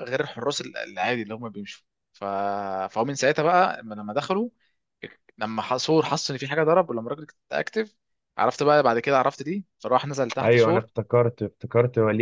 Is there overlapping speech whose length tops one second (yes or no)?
no